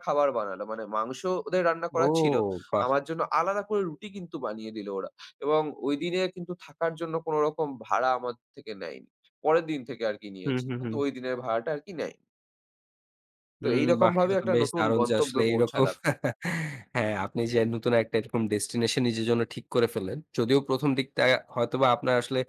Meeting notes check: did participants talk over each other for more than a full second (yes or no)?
yes